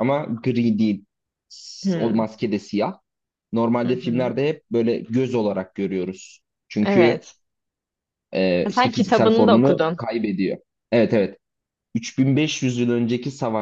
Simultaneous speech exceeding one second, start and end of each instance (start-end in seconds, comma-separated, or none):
8.6-10.0